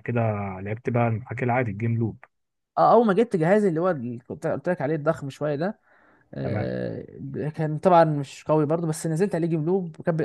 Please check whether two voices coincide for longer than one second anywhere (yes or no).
no